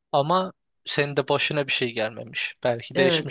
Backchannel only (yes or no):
no